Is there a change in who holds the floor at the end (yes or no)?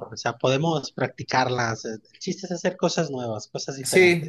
yes